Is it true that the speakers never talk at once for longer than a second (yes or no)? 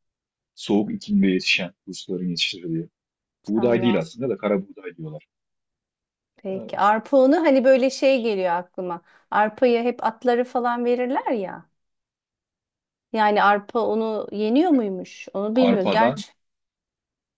yes